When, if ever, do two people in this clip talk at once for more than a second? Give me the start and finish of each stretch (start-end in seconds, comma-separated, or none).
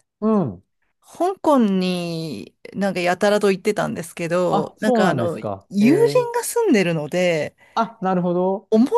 4.5-6.3